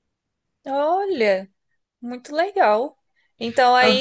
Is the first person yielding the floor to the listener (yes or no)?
no